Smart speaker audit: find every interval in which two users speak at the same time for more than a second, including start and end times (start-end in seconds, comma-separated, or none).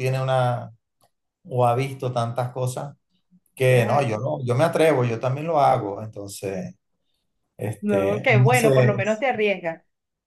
7.8-9.0